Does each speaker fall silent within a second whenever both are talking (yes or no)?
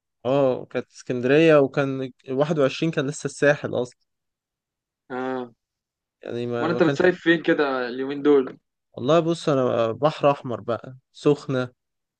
yes